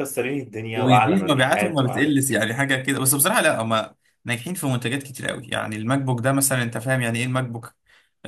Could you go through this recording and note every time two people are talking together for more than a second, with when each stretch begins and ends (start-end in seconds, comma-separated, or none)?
0.7-2.2